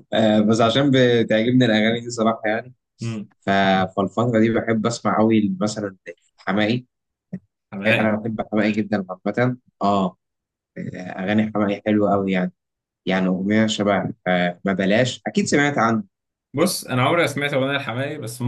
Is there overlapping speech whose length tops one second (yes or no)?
no